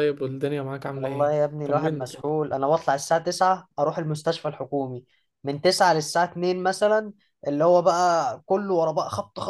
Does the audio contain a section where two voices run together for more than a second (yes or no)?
yes